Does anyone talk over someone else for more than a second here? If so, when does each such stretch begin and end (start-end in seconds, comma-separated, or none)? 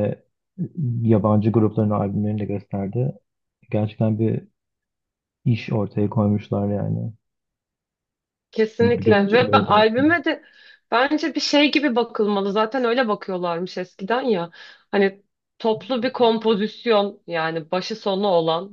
8.8-10.2